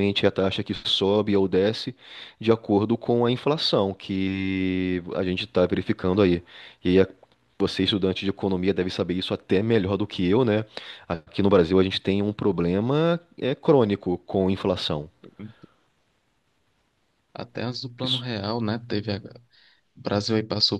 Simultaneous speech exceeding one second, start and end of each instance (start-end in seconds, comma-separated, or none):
none